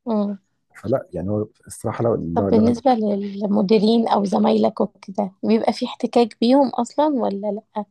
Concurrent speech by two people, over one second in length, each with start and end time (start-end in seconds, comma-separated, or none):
none